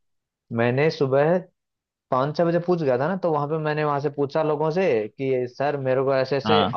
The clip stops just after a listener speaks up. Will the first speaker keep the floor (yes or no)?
yes